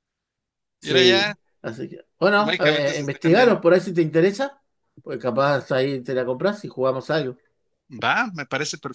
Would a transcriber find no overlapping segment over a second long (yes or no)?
no